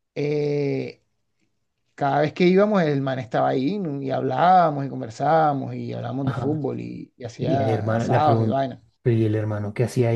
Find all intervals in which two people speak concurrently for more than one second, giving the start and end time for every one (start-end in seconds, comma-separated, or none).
7.4-8.6